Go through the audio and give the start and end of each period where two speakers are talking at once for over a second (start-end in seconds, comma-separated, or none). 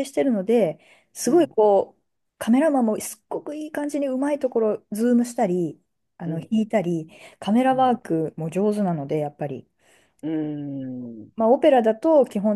none